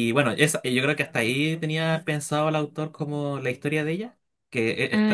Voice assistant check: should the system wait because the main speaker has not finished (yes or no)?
yes